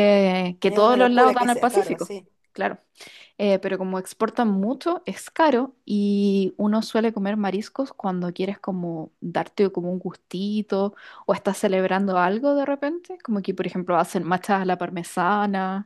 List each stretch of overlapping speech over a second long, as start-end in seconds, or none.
0.6-2.1